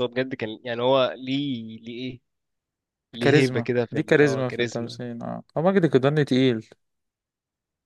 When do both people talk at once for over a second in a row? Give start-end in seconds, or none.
3.2-5.0